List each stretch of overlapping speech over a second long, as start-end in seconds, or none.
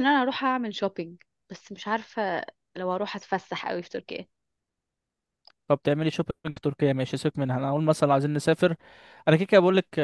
none